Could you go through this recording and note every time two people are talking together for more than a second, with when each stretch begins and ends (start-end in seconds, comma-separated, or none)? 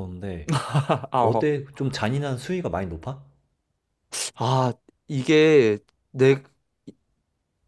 none